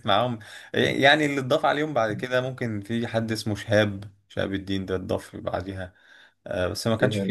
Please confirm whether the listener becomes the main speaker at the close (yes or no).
no